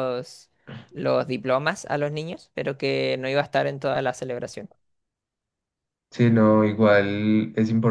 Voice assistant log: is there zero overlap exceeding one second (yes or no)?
yes